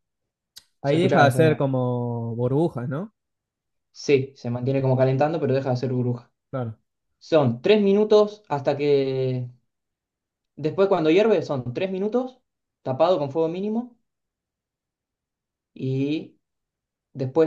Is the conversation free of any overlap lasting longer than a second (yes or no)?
yes